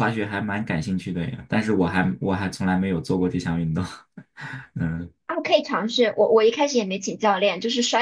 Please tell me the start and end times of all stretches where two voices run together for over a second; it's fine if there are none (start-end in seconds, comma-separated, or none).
none